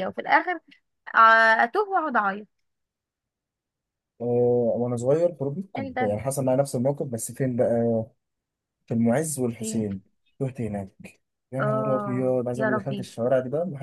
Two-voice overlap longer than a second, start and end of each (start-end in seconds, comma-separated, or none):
11.6-13.1